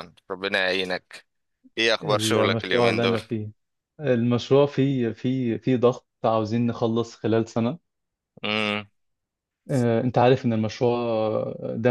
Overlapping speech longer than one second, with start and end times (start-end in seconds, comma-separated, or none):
2.0-3.2